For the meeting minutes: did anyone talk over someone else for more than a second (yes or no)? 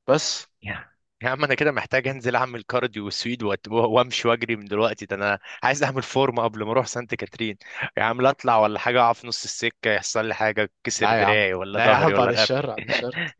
yes